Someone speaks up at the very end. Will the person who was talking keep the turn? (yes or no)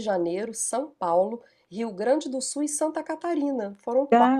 no